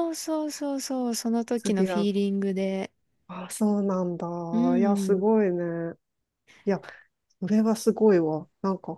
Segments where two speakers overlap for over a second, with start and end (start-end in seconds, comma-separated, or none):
none